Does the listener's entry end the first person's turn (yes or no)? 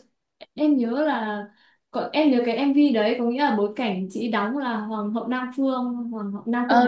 yes